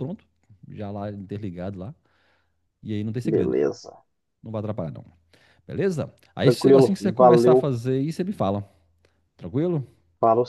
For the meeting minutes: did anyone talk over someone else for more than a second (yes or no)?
yes